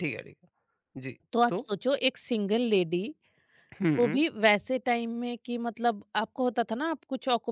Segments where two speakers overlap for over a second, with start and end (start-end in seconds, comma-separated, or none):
none